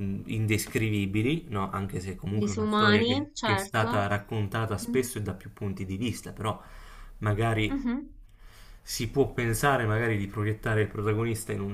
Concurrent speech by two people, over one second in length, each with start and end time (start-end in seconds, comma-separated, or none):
2.4-3.9